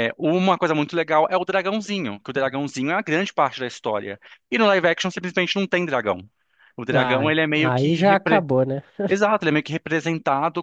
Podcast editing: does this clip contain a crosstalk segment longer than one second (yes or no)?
yes